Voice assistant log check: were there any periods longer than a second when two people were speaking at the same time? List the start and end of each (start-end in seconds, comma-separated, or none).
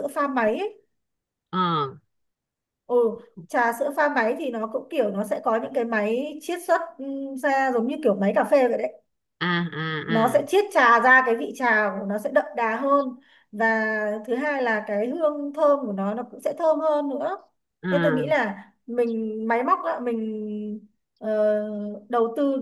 none